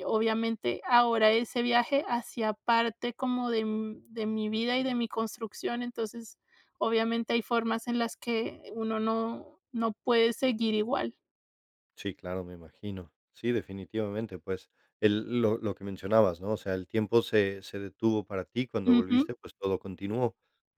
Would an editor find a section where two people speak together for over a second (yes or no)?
no